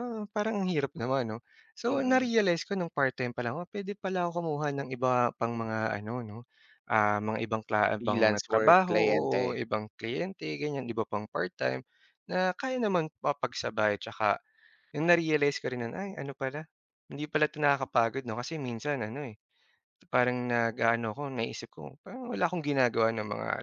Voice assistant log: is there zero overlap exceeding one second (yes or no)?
no